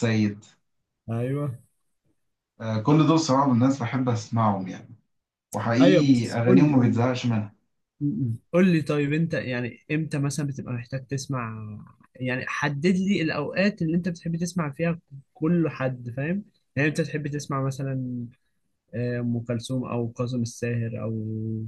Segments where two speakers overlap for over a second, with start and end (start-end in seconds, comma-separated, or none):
5.8-7.0